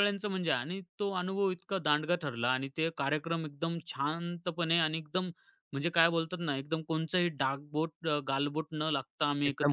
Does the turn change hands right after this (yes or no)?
yes